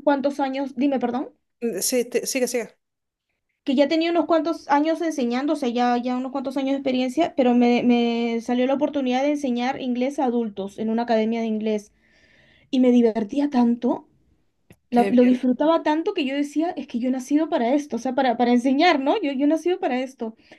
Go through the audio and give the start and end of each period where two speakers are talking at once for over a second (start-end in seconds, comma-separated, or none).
none